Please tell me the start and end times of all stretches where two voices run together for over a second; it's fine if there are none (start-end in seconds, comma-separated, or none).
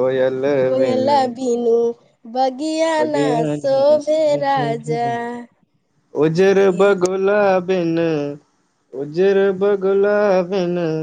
3.0-4.7